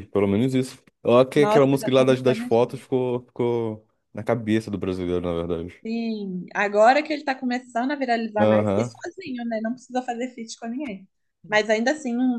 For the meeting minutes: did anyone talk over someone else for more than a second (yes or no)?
yes